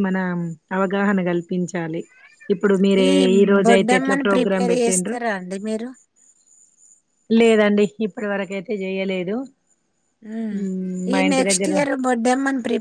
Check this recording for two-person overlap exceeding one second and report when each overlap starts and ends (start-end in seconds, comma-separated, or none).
3.6-5.2